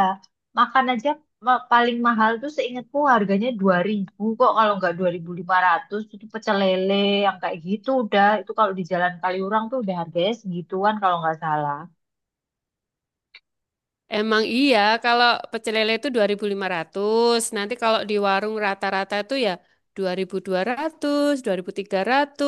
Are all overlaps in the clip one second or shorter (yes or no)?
yes